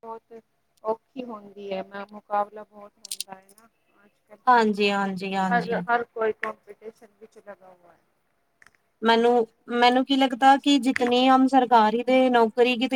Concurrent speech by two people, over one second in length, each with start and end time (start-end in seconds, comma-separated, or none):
none